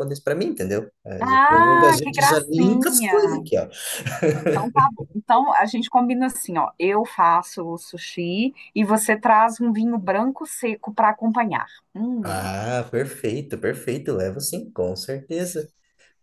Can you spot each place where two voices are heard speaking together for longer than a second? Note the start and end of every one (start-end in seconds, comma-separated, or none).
1.2-3.5